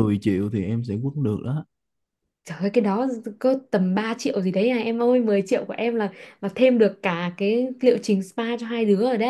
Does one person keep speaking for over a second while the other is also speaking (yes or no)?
no